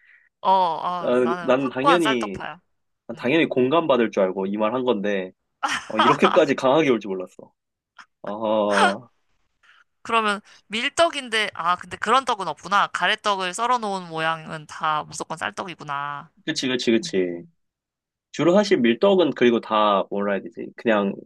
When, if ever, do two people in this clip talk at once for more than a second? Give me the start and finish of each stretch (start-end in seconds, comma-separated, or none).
1.0-2.4